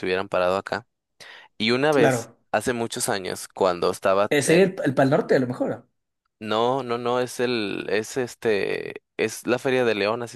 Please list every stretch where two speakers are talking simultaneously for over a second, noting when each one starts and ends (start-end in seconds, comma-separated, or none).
none